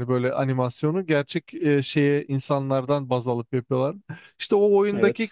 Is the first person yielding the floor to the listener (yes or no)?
no